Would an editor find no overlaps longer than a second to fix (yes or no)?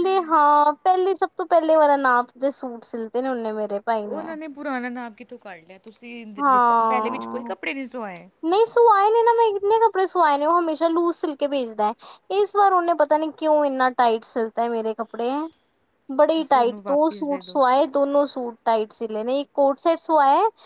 no